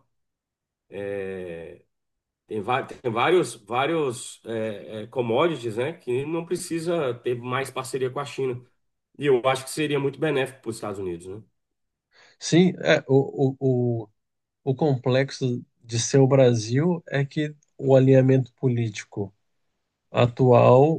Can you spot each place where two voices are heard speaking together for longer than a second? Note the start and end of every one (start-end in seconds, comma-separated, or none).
none